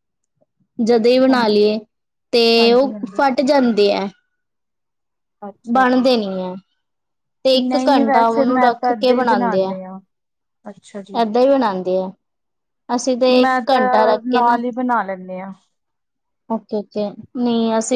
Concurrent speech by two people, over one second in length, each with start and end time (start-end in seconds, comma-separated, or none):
7.7-9.7